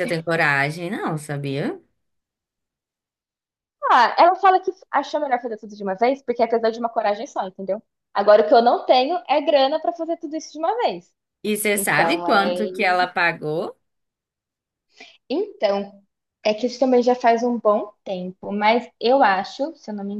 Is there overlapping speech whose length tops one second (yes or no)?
yes